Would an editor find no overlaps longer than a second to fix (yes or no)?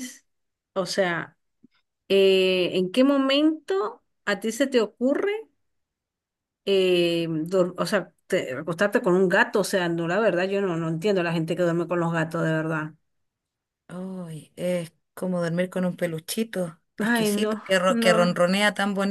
no